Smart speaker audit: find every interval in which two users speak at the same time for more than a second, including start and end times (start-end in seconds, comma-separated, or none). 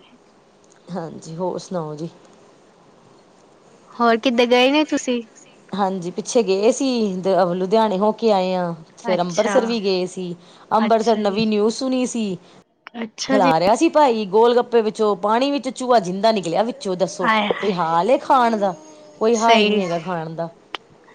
none